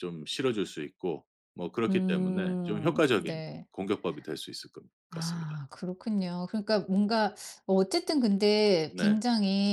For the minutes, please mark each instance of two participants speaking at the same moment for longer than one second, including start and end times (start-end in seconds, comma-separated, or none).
1.9-3.7